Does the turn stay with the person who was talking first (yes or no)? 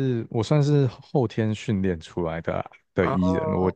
yes